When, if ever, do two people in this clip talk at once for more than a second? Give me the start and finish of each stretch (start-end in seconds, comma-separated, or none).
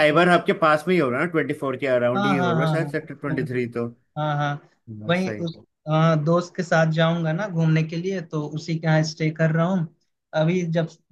2.1-3.7